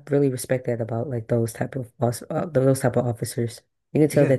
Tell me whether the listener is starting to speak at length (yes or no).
no